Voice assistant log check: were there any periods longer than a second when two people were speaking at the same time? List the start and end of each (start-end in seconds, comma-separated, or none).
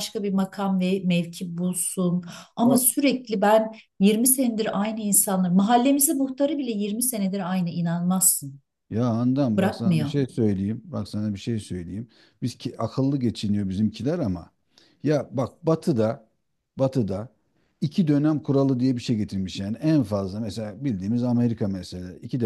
none